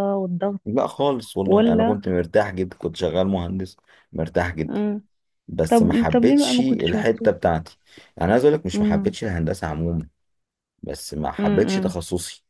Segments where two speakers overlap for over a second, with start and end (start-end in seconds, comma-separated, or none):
5.7-7.3